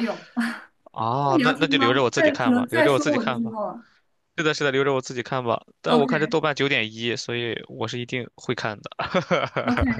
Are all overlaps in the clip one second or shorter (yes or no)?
no